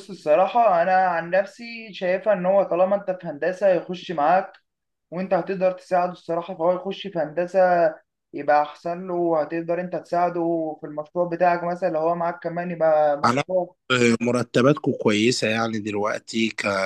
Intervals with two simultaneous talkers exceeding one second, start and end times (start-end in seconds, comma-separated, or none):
none